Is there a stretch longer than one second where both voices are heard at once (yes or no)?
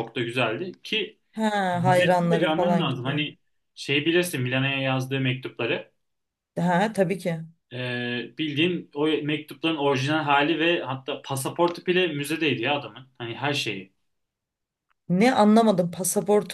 yes